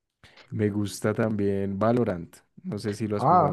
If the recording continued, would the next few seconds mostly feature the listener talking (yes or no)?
yes